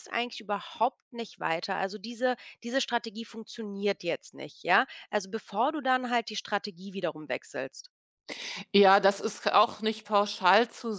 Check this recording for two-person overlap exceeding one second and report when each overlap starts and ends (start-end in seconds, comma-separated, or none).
none